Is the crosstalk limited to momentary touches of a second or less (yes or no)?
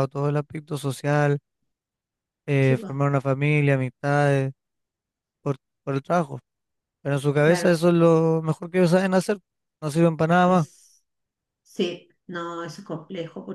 yes